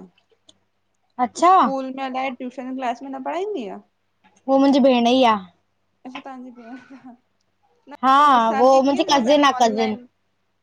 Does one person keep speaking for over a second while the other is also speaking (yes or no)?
yes